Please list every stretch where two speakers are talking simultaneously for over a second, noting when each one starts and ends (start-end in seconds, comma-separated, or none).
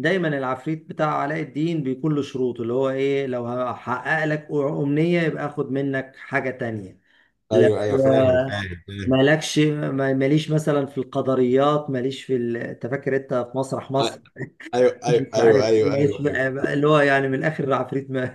15.1-16.4